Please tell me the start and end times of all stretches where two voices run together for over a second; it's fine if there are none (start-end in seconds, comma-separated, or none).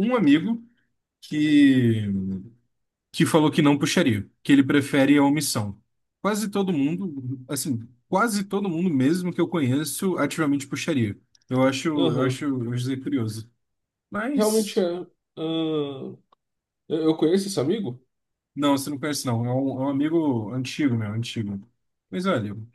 none